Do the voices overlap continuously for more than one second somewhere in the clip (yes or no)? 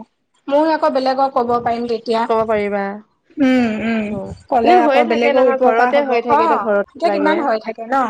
yes